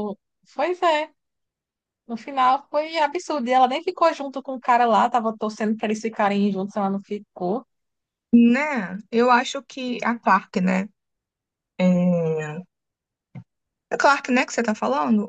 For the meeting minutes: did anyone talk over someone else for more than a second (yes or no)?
no